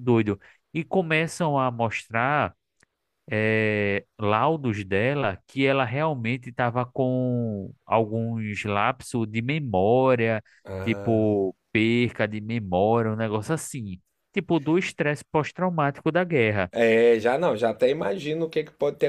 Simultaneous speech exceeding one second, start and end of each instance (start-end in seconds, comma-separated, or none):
none